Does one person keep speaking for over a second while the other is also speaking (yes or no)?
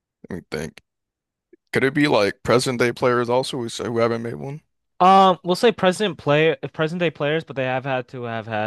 no